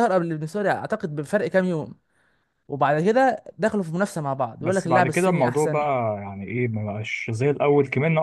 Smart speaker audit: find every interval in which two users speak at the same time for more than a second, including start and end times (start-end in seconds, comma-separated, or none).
4.6-5.8